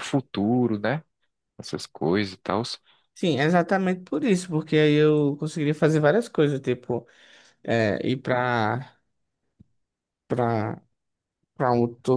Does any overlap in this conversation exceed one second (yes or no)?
no